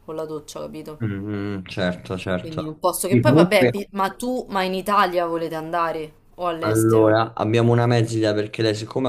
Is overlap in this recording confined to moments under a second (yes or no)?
no